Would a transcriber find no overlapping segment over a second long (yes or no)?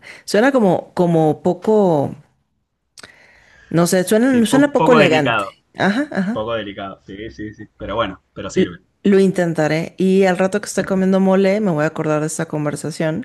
no